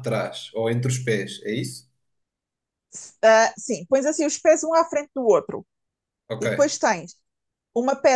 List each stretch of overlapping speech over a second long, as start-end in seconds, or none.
none